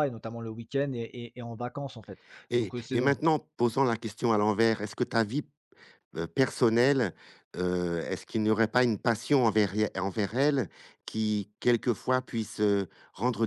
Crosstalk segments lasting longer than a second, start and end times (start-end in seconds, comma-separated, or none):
none